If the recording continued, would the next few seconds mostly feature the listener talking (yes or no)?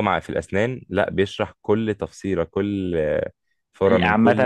yes